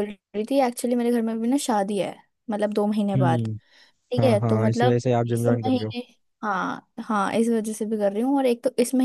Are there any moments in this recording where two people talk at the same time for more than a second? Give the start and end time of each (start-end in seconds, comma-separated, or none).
4.2-5.9